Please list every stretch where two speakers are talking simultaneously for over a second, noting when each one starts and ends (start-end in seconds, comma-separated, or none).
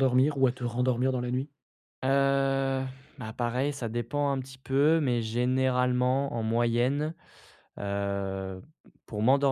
none